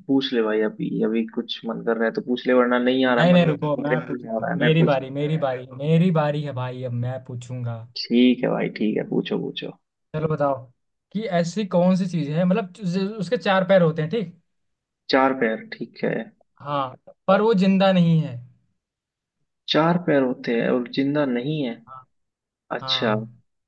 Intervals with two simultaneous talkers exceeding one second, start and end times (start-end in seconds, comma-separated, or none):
3.2-5.2